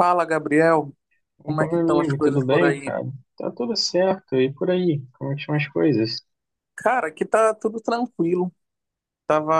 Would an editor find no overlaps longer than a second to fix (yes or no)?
no